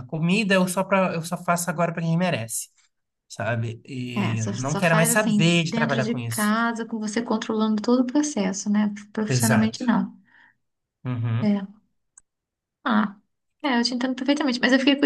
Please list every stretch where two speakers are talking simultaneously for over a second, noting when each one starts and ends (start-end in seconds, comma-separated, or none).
4.2-6.5